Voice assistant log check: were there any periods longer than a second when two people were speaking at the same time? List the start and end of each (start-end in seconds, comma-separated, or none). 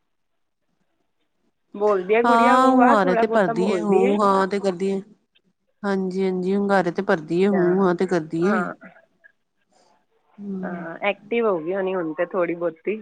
2.2-4.1